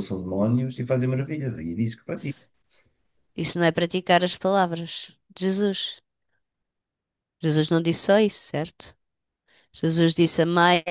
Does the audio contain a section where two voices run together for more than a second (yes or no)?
no